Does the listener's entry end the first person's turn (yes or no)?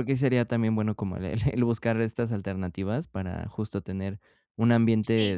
no